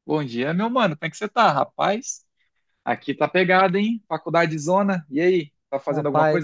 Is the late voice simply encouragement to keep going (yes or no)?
no